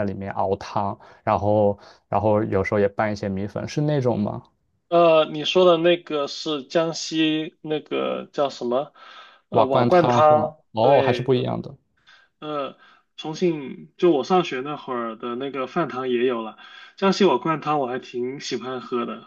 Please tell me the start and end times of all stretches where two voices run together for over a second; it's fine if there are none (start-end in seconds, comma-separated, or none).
9.5-11.4